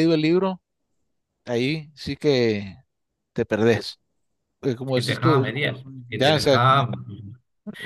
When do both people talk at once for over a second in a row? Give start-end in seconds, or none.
4.9-6.6